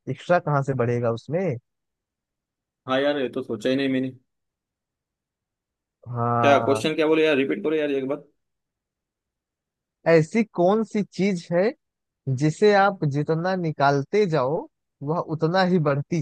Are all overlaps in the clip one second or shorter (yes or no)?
yes